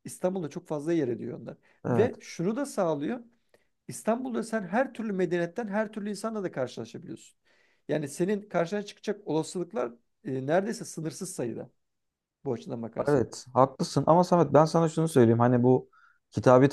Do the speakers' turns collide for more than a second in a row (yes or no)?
no